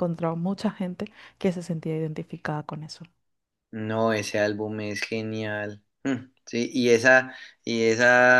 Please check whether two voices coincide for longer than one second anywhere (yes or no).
no